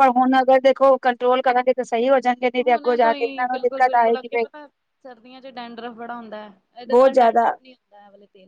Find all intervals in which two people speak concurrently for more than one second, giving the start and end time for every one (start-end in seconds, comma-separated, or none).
2.6-4.5